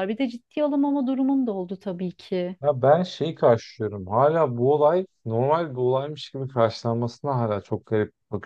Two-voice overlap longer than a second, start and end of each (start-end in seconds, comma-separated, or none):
none